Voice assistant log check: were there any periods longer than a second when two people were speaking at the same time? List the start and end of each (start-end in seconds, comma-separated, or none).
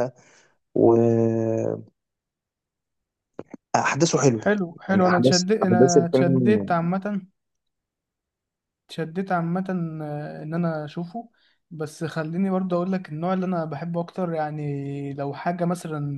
4.9-6.7